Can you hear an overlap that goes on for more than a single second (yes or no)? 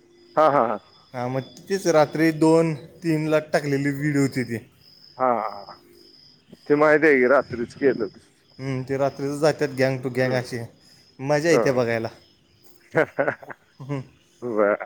no